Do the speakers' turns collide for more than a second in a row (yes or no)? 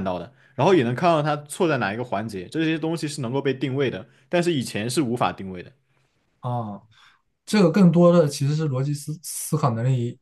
no